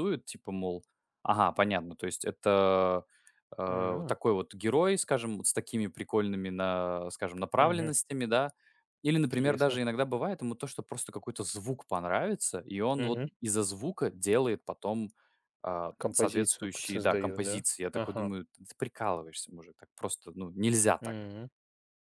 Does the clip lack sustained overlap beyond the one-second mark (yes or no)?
no